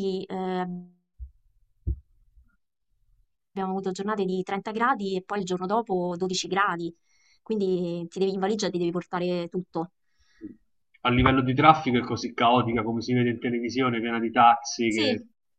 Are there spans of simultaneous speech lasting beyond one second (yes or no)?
no